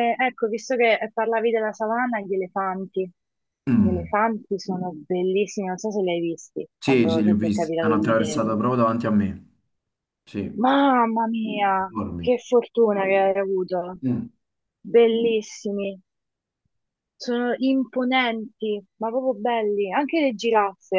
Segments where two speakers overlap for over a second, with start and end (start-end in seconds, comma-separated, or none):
6.8-8.5